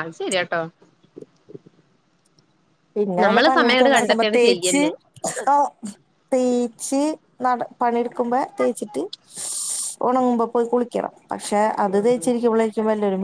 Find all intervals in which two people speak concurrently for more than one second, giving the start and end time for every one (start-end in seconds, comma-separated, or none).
3.2-4.8